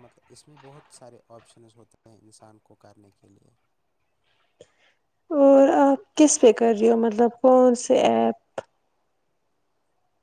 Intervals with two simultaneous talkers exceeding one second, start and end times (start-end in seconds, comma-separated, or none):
none